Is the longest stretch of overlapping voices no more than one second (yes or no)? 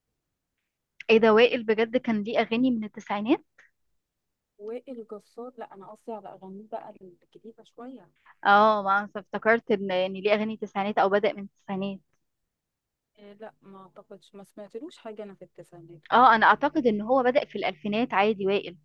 yes